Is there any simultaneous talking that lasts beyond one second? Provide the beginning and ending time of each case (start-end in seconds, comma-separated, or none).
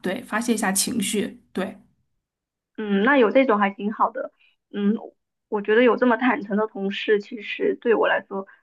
none